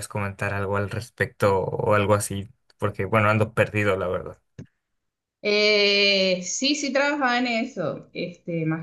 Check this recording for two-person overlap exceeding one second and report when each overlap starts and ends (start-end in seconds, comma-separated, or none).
none